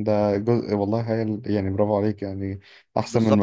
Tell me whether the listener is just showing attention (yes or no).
no